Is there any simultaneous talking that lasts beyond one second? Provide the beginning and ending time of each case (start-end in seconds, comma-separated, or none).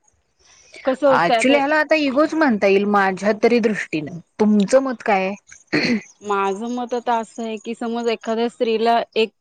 none